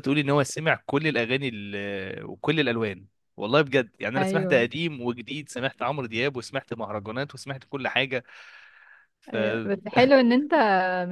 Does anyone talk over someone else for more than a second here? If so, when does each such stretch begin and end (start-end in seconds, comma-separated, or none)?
none